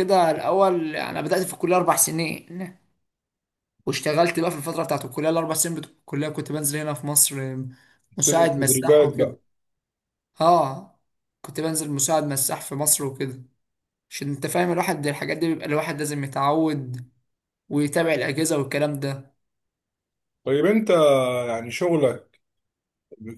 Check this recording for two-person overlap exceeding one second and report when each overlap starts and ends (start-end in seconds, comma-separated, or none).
8.2-9.4